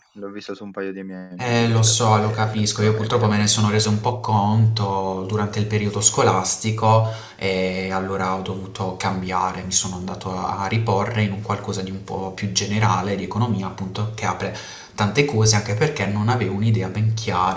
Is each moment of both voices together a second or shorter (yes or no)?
no